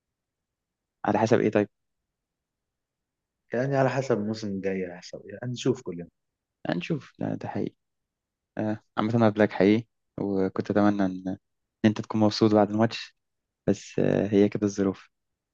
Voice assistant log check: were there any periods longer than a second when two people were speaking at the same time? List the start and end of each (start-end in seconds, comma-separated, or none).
none